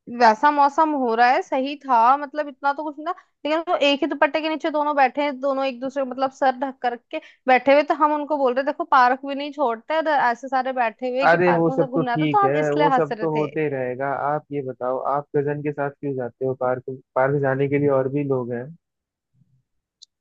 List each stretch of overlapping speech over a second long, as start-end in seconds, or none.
11.3-13.5